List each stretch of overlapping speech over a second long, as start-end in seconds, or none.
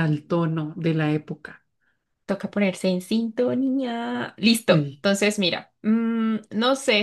none